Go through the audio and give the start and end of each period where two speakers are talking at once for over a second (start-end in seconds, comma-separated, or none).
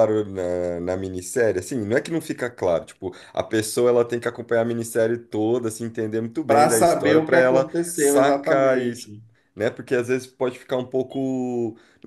6.5-9.1